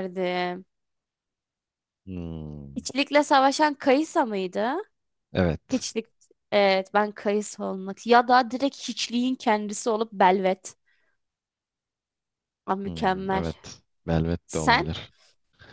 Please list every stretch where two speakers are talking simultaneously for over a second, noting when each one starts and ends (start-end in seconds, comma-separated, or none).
none